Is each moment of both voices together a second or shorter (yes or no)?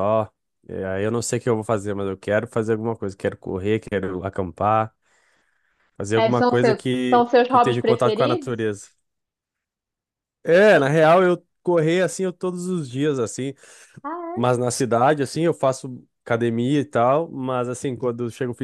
no